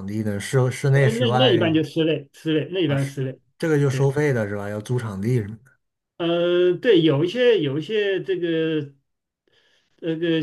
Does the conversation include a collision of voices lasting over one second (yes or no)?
no